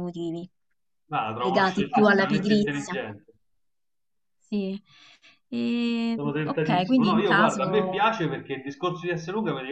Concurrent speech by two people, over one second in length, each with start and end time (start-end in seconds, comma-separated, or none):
1.4-3.0, 6.1-8.2